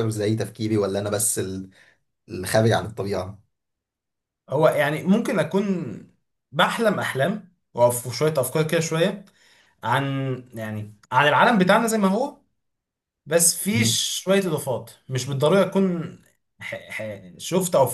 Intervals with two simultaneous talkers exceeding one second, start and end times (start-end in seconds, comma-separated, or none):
none